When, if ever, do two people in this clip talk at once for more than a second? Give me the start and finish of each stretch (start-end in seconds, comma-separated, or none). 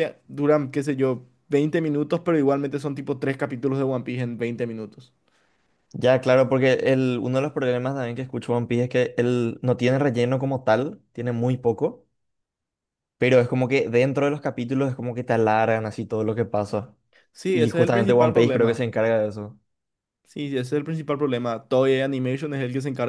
17.5-18.9